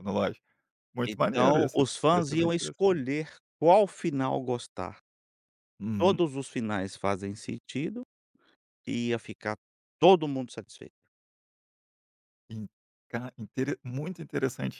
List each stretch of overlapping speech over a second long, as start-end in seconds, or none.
1.1-3.0